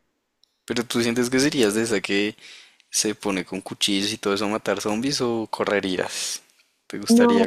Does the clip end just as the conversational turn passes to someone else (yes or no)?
yes